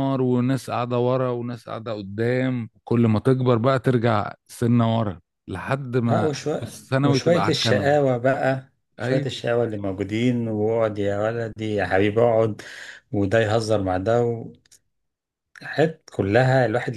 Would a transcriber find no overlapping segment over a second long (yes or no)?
no